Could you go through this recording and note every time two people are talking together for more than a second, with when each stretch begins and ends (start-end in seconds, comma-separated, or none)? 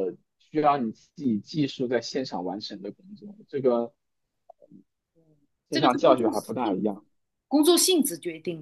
5.7-6.9